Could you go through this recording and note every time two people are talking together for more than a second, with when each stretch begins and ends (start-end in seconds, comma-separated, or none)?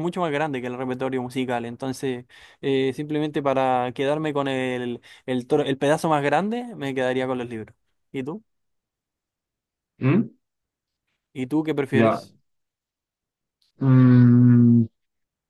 none